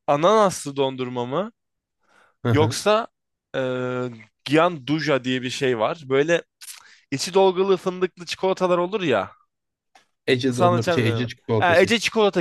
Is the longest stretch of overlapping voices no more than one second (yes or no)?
no